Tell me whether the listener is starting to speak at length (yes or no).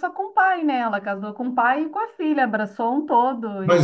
yes